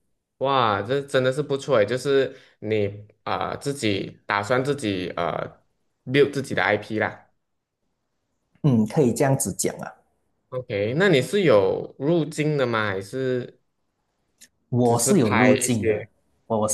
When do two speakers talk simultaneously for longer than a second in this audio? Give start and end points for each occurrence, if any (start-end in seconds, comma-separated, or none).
14.8-16.1